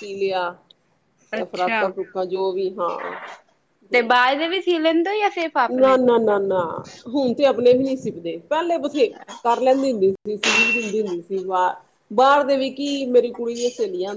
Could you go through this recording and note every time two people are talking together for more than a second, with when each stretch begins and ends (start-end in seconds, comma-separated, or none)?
none